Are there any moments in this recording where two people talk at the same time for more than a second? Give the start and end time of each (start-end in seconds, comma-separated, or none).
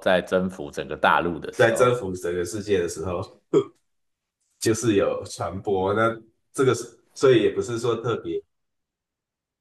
none